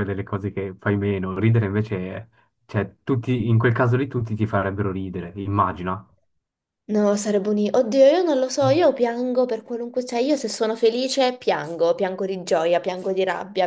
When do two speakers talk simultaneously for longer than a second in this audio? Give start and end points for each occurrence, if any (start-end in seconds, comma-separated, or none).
none